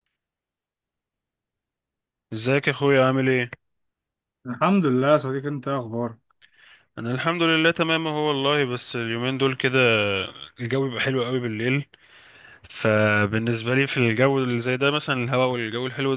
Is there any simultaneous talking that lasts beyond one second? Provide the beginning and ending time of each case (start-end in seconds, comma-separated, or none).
none